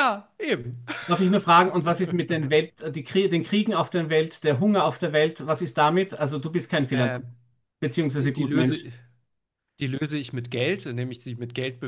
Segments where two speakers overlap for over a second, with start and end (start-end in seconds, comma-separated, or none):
none